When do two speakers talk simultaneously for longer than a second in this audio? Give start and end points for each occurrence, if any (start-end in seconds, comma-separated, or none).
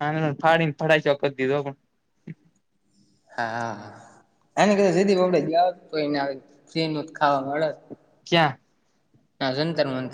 none